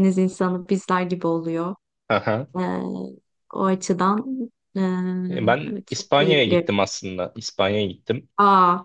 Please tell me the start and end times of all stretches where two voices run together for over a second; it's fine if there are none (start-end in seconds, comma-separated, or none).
5.3-6.7